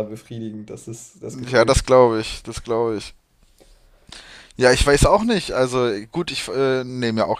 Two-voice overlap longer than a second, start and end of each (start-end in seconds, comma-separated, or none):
none